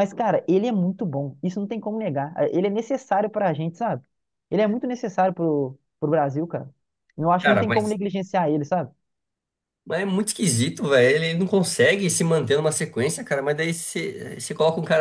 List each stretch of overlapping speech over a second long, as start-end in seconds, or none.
none